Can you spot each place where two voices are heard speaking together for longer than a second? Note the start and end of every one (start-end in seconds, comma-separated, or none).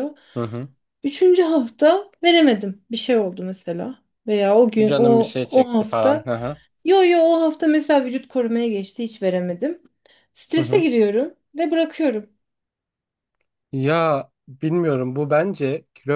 4.9-6.3